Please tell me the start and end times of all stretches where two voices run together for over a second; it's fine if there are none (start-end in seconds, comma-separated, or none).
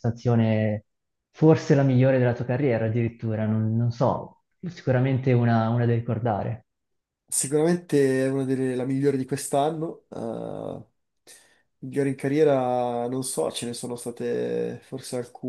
none